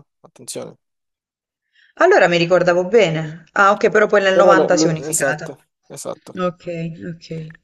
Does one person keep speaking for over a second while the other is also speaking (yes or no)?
yes